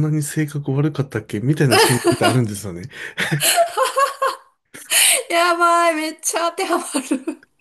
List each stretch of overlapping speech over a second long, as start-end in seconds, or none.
none